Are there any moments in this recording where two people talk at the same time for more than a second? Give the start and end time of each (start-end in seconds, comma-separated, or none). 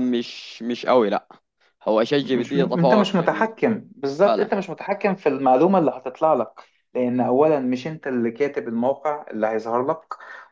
2.2-3.5